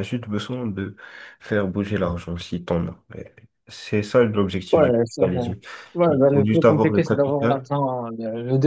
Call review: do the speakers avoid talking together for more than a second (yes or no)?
no